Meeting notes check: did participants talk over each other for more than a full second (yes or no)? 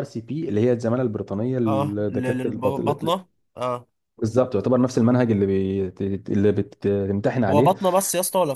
yes